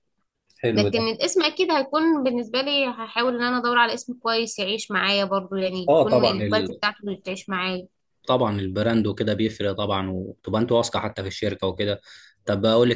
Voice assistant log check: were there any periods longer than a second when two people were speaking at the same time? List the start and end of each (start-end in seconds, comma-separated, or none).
none